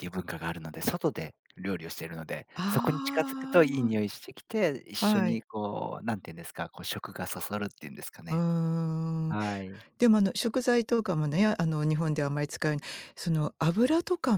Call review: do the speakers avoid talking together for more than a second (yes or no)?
no